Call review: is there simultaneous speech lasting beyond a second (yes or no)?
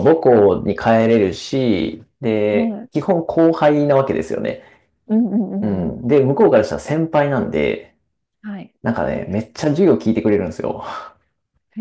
no